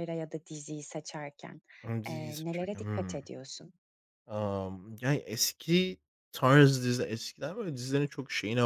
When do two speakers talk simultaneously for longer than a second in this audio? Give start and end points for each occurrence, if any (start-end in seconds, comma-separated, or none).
2.1-3.3